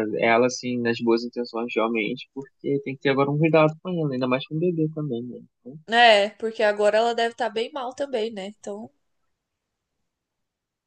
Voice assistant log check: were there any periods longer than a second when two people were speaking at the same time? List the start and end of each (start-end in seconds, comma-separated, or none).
none